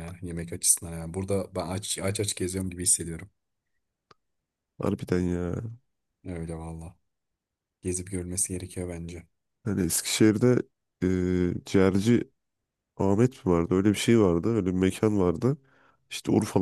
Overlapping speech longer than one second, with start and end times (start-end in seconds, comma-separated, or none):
none